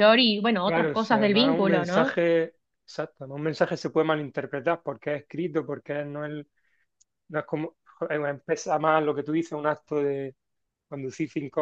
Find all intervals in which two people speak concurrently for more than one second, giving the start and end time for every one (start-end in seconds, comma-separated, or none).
0.6-2.2